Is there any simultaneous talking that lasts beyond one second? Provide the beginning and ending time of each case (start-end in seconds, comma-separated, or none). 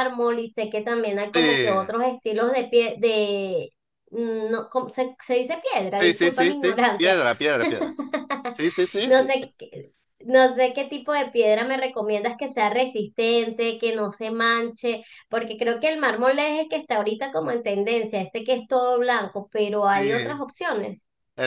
6.0-7.2